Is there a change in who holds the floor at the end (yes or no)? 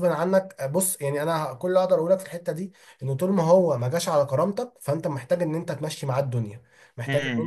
yes